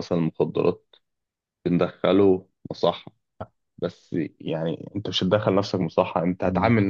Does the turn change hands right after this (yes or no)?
no